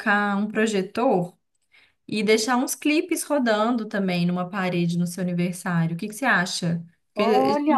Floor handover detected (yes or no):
no